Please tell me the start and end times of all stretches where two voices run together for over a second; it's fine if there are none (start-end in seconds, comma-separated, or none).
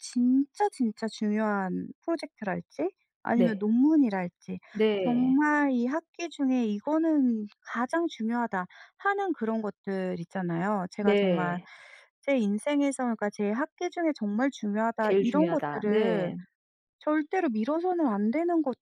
15.0-16.3